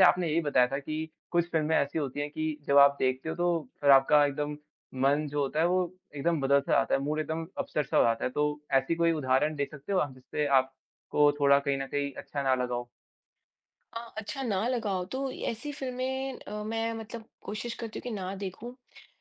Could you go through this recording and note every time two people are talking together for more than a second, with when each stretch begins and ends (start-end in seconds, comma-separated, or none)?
none